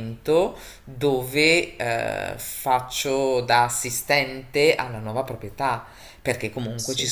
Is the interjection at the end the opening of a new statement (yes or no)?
no